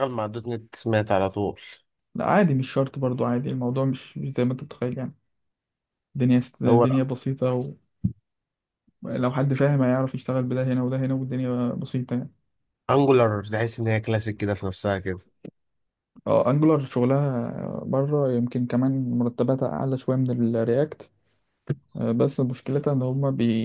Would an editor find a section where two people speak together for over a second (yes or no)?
no